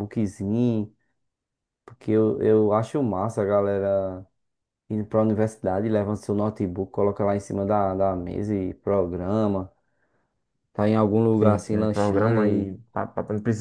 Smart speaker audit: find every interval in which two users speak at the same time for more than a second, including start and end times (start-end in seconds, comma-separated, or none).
11.4-12.7